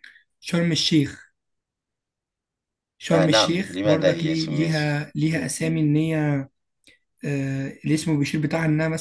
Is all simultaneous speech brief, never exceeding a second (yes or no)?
no